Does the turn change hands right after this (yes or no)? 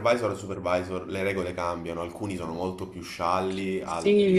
yes